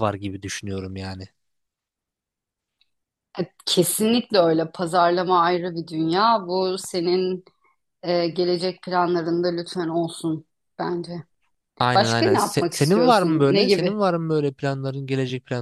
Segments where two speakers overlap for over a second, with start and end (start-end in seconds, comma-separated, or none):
11.9-14.0